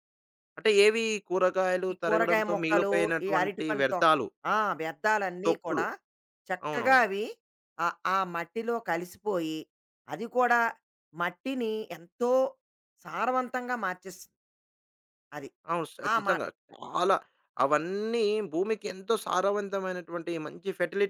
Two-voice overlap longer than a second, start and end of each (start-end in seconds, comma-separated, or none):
1.9-4.0